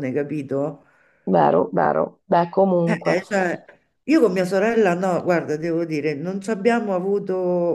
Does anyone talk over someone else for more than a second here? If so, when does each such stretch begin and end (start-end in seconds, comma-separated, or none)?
none